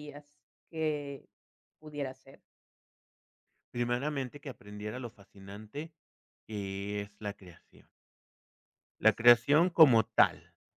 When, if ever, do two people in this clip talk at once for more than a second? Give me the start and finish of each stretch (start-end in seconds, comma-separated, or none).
none